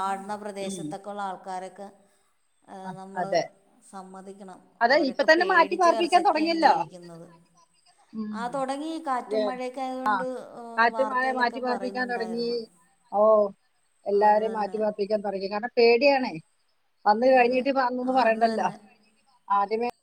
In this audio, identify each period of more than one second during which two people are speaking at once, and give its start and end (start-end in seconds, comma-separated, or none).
4.8-6.7, 10.9-12.5